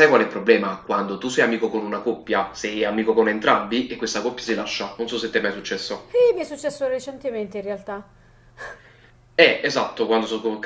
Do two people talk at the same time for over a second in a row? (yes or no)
no